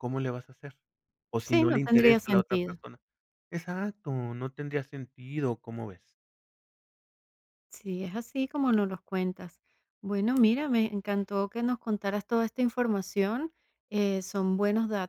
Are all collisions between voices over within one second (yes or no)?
no